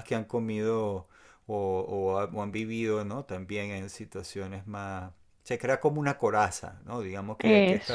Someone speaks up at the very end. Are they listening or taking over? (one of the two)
listening